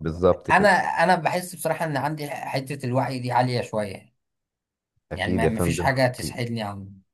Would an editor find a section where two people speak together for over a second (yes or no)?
yes